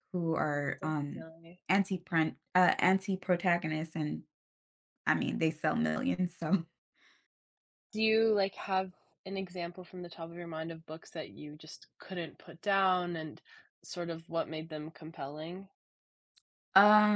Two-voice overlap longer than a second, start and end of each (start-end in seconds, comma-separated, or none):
none